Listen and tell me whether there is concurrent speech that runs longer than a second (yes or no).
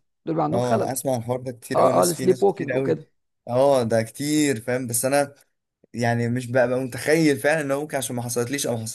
yes